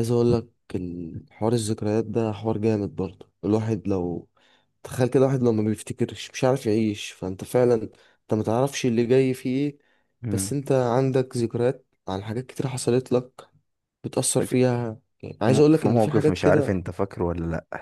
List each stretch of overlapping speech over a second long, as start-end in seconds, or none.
15.5-16.8